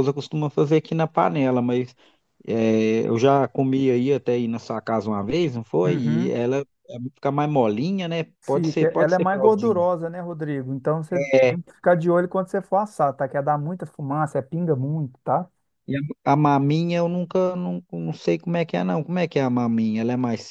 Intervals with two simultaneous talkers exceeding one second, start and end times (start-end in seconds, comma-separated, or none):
8.4-9.8